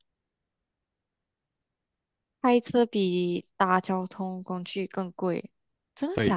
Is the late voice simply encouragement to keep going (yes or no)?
no